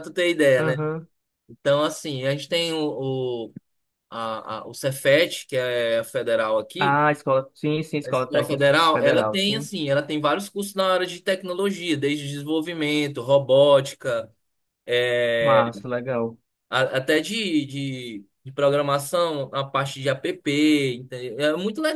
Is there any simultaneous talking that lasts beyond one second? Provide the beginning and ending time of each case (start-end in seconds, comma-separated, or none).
8.1-9.7